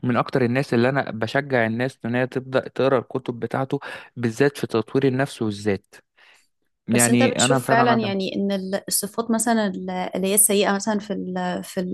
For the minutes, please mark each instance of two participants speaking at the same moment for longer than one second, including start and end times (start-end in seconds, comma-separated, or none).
6.9-8.1